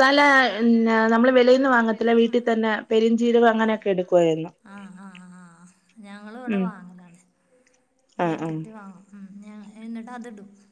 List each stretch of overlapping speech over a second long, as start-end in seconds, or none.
none